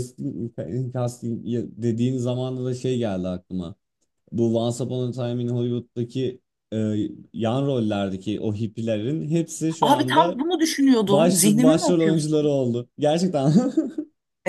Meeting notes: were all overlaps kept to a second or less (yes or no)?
no